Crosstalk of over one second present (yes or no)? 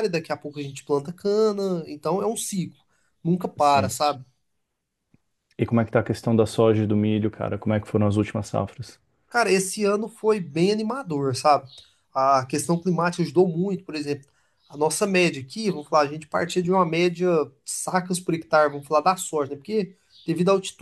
no